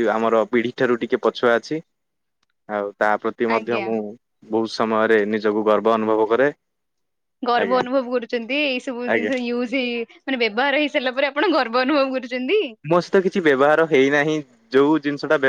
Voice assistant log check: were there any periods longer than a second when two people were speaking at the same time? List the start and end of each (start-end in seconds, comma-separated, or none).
none